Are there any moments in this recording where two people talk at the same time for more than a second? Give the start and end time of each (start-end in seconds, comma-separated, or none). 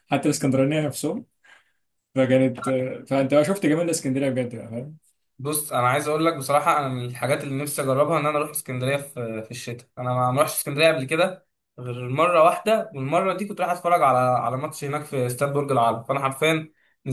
none